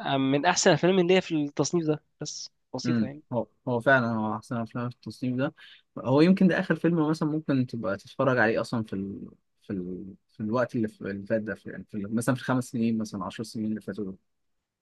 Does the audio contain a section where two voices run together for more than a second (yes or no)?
no